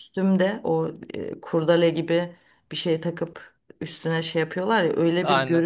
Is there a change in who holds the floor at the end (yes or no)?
no